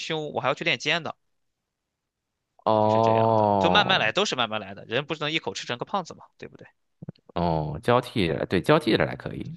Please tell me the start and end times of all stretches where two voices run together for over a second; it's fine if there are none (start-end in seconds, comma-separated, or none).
2.8-4.0